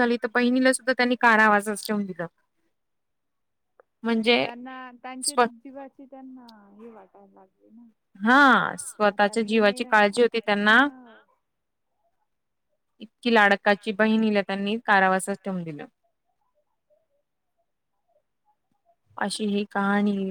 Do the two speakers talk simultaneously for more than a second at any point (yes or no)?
yes